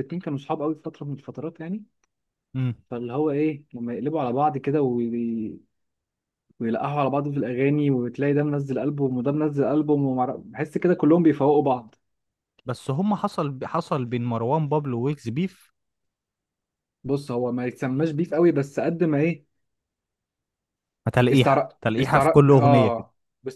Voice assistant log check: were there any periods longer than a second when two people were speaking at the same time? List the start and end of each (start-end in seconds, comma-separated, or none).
21.3-23.1